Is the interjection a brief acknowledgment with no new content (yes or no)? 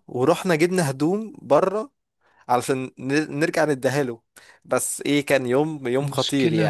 no